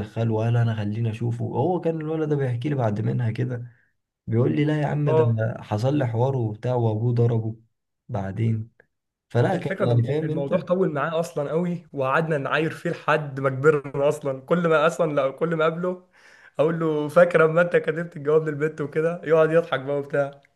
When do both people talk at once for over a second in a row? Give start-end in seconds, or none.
9.5-10.7